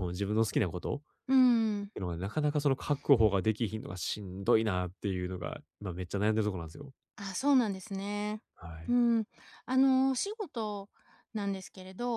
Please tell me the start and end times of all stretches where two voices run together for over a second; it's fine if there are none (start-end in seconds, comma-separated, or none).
none